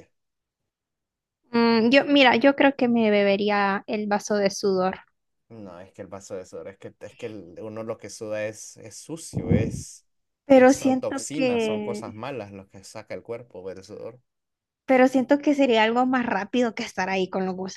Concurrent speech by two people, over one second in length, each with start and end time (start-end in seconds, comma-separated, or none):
10.5-12.2